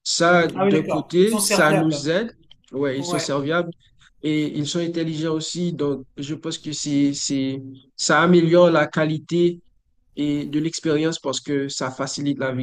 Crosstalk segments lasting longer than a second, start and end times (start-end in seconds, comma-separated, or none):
0.5-2.1